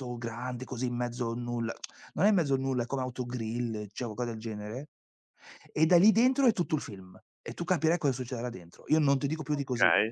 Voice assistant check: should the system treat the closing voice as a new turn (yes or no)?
yes